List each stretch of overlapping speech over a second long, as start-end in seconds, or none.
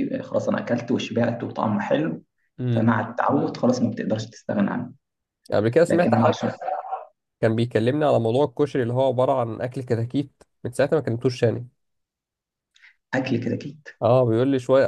none